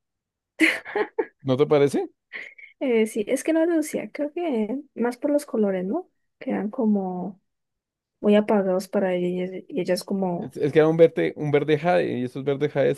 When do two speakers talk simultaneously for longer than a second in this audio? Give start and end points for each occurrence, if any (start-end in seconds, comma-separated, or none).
none